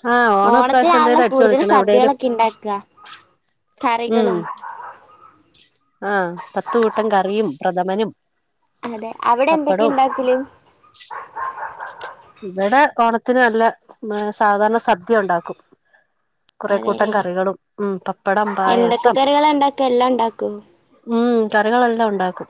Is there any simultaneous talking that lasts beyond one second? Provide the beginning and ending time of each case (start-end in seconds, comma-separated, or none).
0.5-2.1